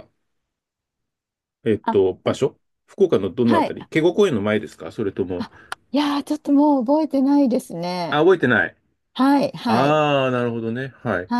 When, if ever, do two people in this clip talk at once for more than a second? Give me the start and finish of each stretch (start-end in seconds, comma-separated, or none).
none